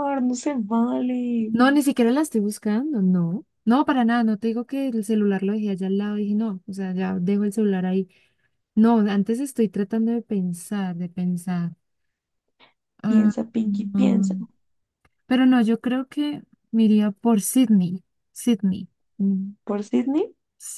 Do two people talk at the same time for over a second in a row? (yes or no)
yes